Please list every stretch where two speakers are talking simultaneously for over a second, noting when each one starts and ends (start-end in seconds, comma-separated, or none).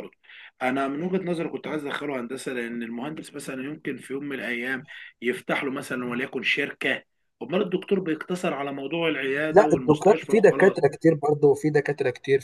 9.5-10.8